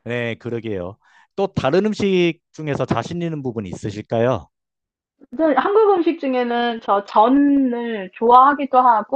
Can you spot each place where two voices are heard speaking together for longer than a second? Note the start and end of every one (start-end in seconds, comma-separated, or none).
none